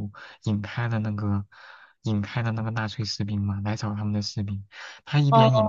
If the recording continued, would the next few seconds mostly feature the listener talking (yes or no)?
no